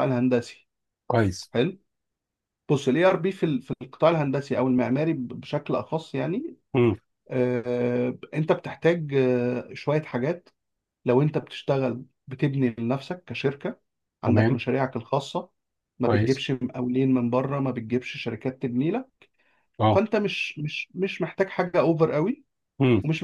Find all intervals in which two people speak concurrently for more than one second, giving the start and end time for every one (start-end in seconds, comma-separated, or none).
none